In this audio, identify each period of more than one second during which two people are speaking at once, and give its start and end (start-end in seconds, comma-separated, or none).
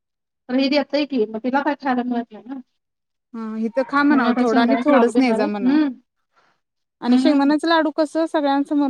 4.1-5.8